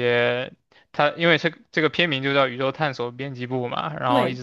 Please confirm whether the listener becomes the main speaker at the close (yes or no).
no